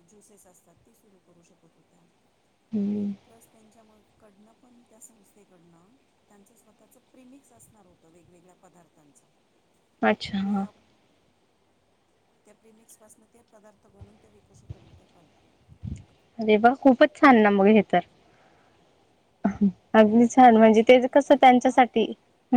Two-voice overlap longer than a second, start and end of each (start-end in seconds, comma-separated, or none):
20.4-21.8